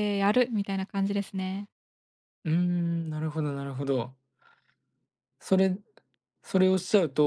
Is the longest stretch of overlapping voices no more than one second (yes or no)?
yes